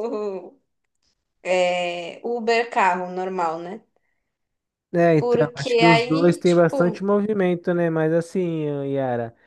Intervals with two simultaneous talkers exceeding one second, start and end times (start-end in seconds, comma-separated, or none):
5.2-7.2